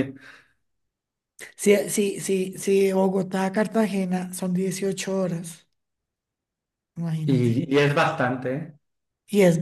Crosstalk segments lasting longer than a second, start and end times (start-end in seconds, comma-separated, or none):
none